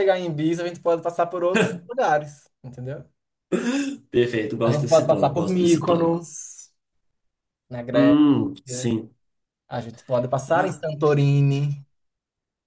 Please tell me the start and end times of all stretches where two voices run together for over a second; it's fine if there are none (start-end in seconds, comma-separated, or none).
4.6-6.2